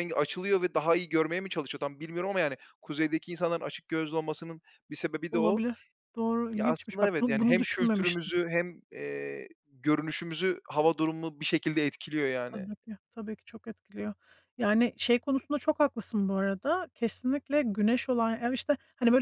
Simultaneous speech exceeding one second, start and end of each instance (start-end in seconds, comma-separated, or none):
6.5-8.3